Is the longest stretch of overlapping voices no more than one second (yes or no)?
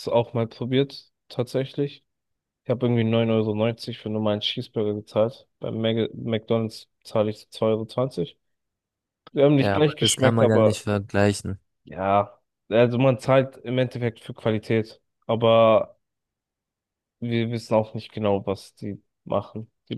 no